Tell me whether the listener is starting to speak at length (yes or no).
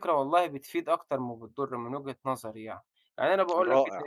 no